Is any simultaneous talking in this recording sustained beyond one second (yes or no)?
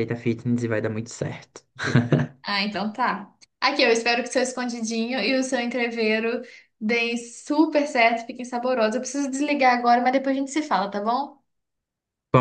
no